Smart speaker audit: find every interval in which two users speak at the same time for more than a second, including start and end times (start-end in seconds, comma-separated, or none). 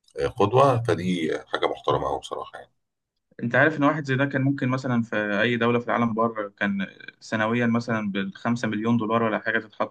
none